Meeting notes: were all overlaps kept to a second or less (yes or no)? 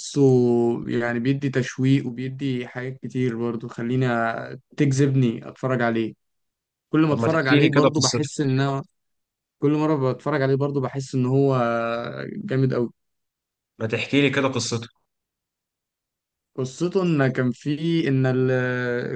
no